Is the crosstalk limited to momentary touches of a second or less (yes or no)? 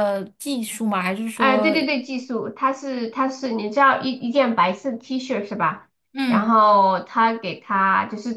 yes